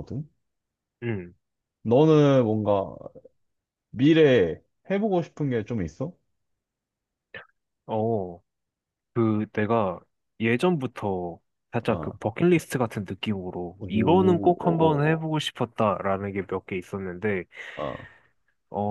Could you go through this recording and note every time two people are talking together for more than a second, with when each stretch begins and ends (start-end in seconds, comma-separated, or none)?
13.8-15.3